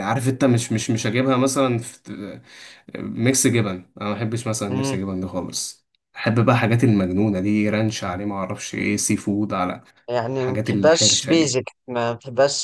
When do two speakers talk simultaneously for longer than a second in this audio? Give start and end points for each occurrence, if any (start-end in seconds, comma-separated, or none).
10.3-11.6